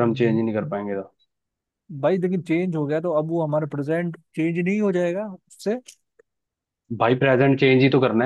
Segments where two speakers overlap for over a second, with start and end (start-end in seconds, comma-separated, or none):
none